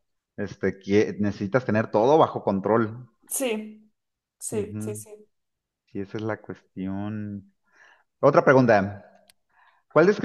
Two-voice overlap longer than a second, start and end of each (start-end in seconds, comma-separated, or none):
none